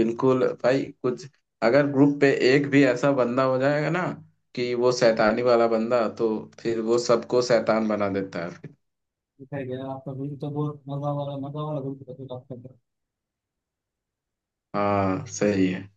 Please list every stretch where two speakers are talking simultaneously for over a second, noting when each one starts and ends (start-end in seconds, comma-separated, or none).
none